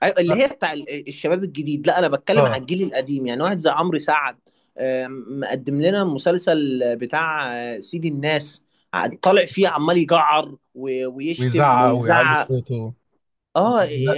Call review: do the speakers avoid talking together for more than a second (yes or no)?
no